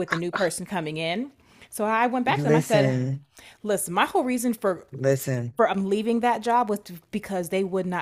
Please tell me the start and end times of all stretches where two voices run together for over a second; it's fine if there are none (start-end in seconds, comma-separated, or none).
none